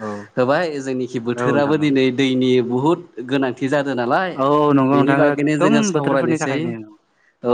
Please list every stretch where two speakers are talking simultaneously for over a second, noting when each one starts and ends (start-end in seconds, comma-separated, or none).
5.0-6.6